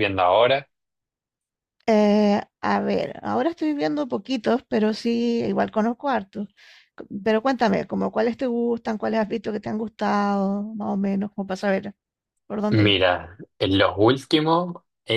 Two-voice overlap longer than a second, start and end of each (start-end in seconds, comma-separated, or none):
none